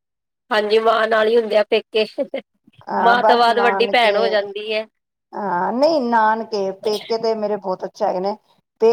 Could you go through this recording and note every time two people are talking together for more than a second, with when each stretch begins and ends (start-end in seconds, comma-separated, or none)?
3.0-4.4